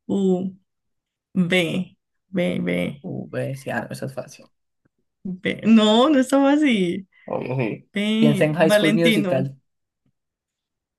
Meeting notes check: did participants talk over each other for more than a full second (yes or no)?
yes